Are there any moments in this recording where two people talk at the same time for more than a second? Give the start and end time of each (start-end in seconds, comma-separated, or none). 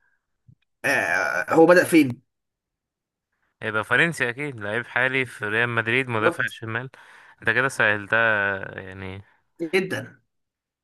none